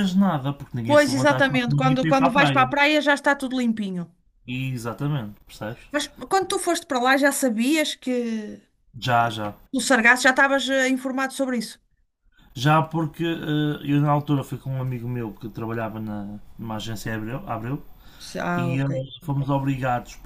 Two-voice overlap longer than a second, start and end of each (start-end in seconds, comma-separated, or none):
0.9-2.7